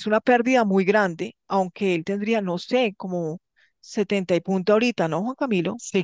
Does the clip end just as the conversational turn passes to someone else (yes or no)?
yes